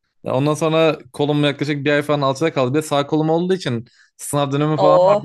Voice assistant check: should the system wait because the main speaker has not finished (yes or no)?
yes